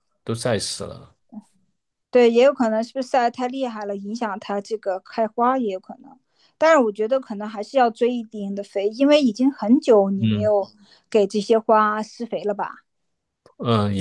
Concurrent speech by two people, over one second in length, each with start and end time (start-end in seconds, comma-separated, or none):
none